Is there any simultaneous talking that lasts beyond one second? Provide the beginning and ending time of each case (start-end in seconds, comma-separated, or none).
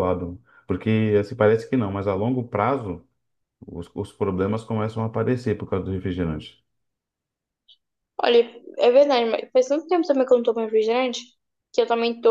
none